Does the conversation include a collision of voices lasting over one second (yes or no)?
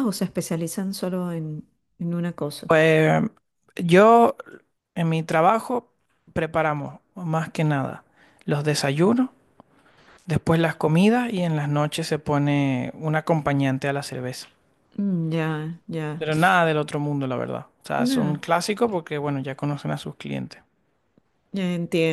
no